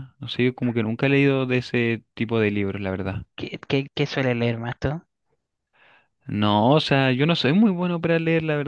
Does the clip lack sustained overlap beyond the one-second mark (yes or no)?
yes